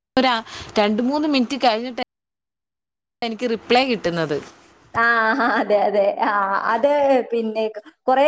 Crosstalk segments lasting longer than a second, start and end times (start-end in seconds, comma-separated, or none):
none